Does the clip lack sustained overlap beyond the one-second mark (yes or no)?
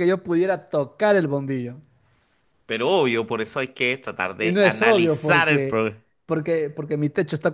no